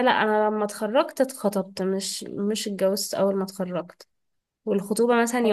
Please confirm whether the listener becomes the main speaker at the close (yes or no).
no